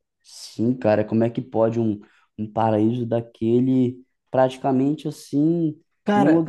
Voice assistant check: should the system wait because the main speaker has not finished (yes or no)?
yes